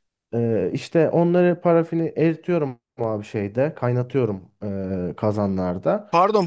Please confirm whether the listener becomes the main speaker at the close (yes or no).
yes